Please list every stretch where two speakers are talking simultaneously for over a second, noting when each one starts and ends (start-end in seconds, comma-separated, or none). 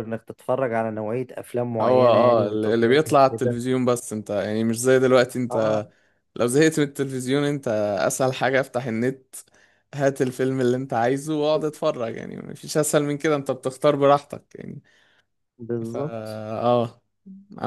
1.8-3.6